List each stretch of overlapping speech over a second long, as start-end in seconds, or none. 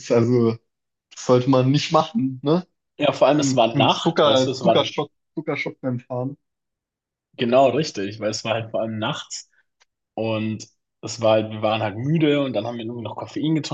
3.4-4.9